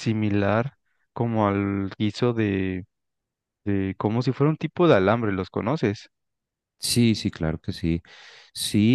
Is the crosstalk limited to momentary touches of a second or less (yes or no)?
yes